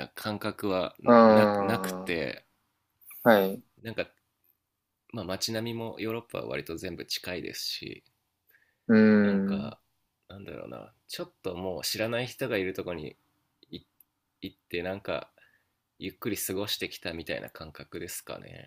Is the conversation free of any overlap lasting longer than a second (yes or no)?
no